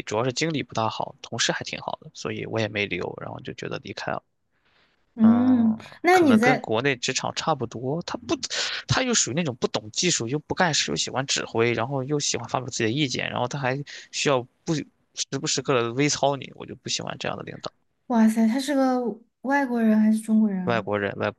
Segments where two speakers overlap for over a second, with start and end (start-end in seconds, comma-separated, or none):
5.2-6.7